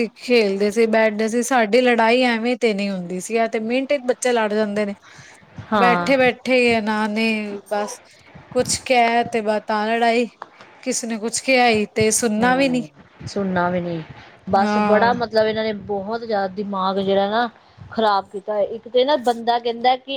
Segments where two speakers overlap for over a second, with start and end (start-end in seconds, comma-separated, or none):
none